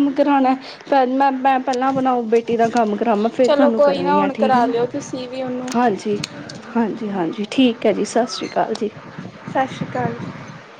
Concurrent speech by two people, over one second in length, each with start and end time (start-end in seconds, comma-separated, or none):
3.4-4.7